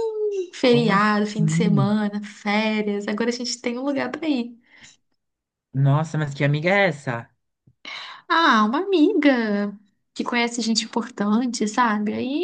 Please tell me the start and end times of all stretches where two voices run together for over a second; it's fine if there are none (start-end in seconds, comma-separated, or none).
0.6-1.9